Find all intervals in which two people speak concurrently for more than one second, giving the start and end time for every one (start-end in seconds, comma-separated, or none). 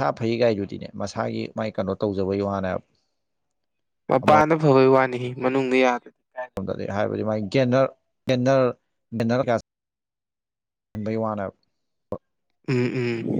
none